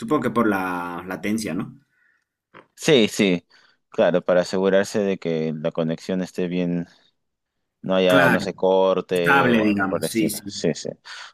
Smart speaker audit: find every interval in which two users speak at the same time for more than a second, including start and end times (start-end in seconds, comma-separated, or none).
9.2-10.5